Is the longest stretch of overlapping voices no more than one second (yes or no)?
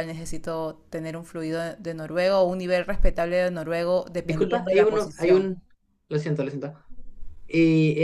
no